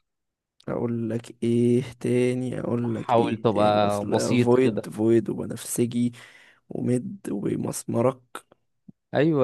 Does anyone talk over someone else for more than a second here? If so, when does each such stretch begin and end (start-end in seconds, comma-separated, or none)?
2.8-4.9